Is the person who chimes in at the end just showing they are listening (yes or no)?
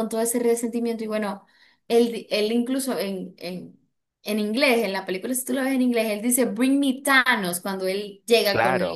no